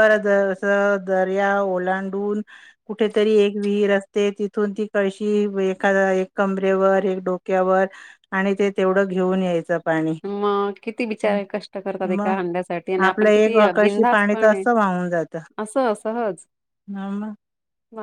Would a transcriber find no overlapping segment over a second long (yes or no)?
no